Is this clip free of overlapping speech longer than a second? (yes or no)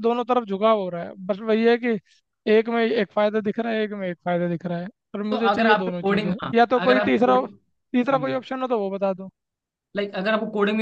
no